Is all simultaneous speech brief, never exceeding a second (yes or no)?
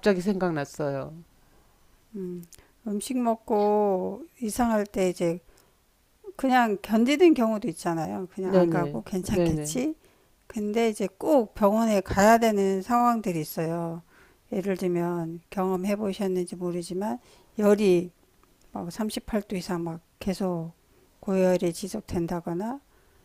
no